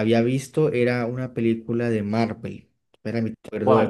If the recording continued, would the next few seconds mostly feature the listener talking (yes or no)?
no